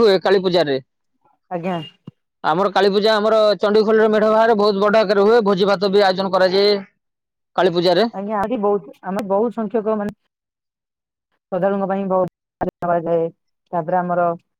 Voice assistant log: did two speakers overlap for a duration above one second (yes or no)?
no